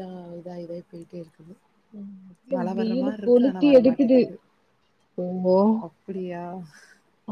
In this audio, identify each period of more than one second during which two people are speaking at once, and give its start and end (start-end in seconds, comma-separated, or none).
2.5-4.2